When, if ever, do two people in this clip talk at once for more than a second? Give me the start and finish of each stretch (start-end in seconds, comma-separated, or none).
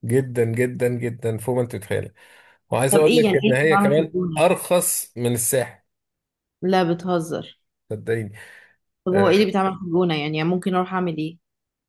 2.9-4.6